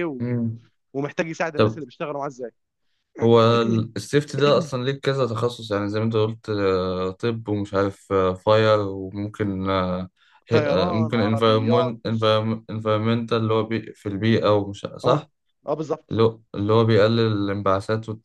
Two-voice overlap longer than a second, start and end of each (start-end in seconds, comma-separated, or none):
10.5-11.9